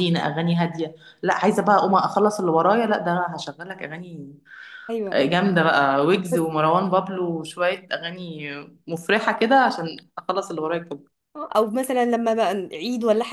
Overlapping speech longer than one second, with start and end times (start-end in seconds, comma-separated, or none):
none